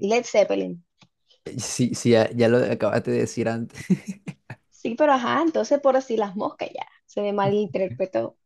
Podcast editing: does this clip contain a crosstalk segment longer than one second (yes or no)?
no